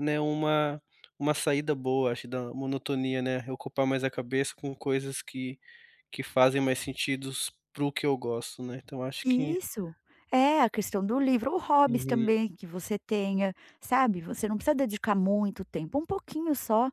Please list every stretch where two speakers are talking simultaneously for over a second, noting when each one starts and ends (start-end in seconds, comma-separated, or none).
none